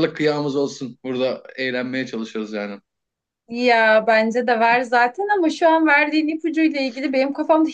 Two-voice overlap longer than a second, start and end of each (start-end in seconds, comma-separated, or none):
none